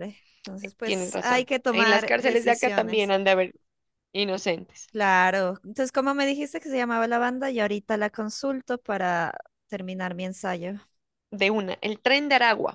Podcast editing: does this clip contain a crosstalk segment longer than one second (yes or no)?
yes